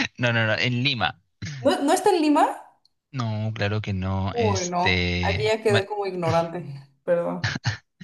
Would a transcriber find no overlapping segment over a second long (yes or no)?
no